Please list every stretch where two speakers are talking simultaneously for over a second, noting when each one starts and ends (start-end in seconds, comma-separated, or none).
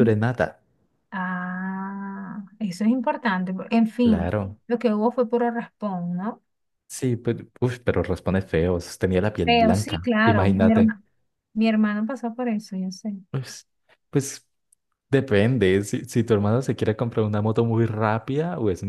9.4-10.9